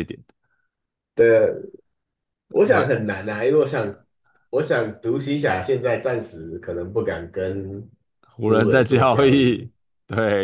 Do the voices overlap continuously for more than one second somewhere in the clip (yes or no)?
yes